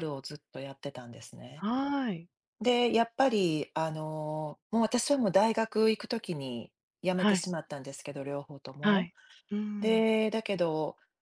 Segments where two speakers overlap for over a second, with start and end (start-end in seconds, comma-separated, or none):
none